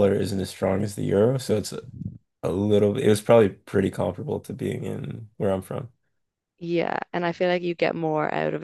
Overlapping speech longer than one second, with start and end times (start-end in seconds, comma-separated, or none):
none